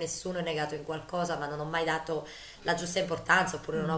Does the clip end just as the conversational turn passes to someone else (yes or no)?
no